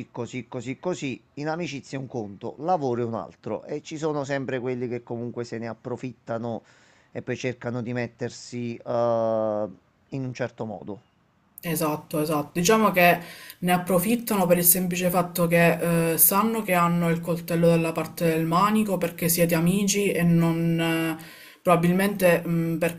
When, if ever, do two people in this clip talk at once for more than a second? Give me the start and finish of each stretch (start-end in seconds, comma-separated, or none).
none